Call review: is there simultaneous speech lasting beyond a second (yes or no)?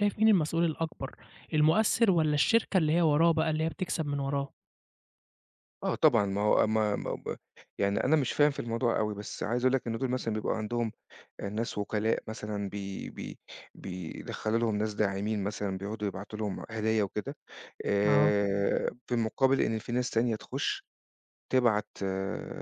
no